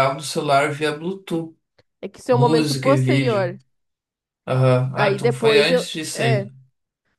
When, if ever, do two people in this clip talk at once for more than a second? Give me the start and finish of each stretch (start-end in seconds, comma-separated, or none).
2.3-3.5, 5.0-6.5